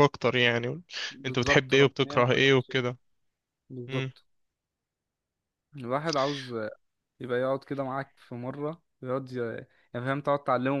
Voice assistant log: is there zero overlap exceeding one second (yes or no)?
no